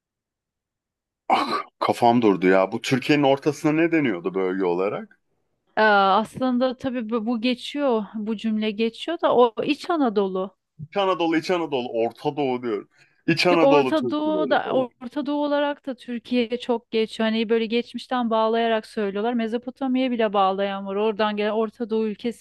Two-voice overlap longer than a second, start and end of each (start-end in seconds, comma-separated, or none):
13.5-14.9